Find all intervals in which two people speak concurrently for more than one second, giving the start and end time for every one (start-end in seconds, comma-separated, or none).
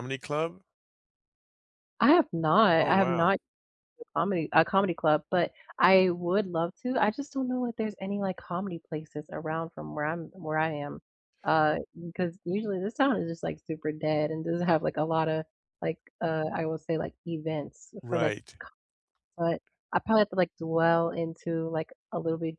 none